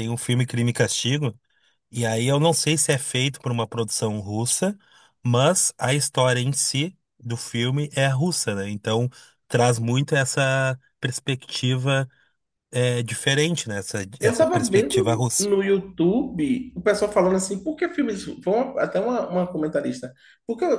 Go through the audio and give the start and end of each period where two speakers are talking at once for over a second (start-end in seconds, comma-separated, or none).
14.2-15.5